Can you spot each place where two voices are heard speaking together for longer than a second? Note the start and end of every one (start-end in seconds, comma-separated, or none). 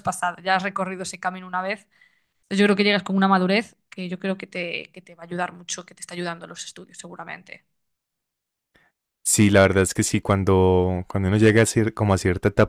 none